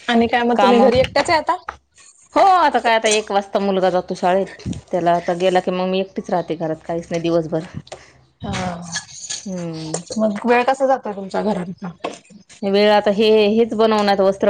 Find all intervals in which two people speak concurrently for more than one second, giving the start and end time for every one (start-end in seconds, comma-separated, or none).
none